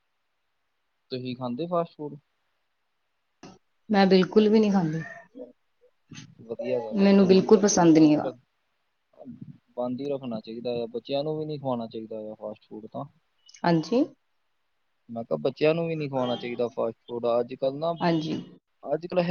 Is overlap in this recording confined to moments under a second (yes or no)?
no